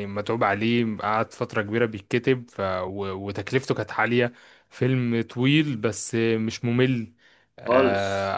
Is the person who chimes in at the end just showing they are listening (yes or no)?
yes